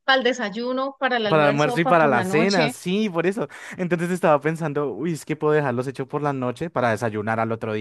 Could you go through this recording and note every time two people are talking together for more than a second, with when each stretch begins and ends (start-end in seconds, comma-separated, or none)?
1.3-2.8